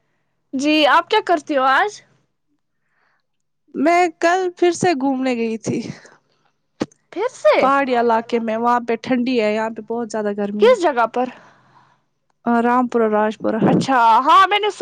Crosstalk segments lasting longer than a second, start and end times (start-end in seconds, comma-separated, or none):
none